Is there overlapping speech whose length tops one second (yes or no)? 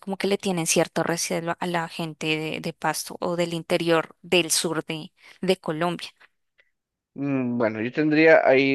no